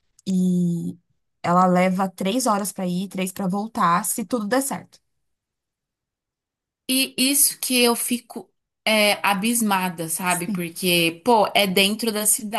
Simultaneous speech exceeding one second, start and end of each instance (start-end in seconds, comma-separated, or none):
none